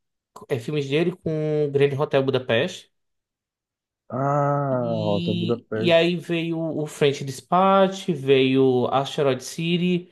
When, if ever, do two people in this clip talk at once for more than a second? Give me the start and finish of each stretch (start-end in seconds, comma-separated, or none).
4.7-6.0